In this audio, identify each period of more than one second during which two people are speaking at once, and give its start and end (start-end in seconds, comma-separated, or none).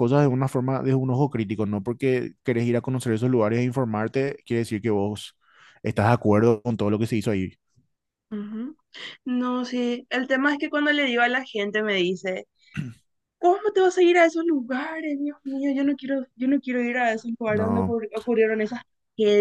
none